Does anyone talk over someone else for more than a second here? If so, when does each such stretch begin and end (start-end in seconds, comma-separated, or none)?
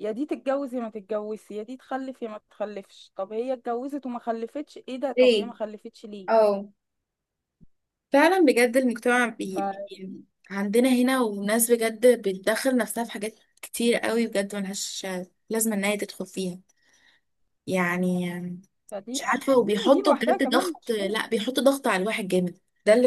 19.1-21.2